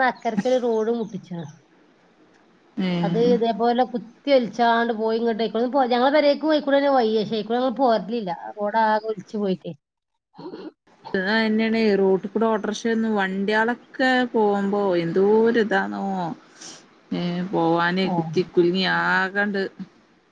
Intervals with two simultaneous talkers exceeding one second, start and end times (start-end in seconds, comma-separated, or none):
none